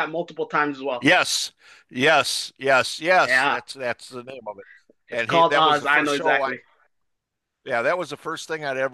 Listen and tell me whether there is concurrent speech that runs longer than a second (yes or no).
yes